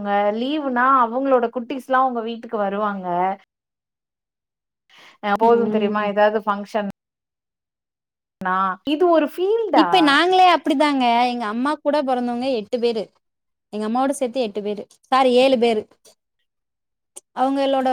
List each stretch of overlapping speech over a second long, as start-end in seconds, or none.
none